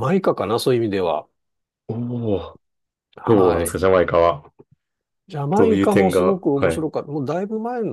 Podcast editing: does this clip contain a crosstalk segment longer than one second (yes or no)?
yes